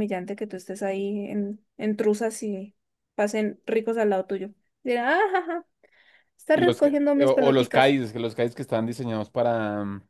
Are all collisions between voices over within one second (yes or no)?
no